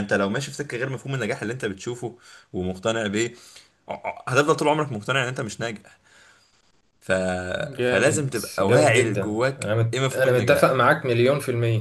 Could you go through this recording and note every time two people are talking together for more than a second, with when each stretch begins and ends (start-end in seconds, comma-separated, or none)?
7.8-10.8